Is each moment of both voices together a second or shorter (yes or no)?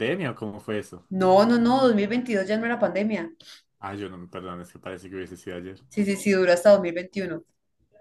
yes